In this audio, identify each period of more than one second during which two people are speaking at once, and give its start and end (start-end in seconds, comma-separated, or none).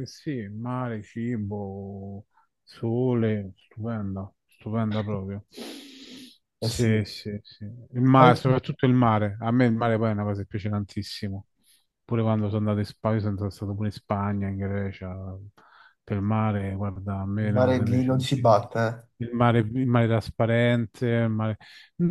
17.5-18.7